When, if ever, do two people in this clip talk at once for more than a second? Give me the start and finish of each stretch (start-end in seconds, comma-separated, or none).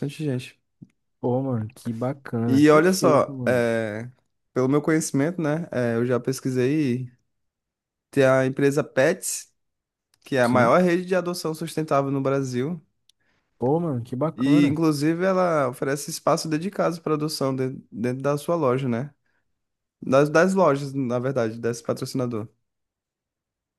2.5-3.7